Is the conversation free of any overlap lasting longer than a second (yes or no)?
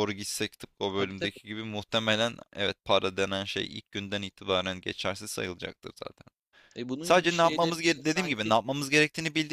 no